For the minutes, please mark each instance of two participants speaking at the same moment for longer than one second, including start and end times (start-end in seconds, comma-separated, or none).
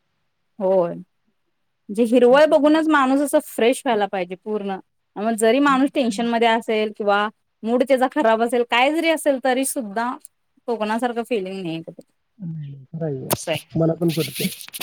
none